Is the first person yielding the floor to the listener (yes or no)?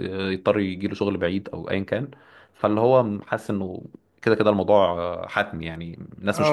yes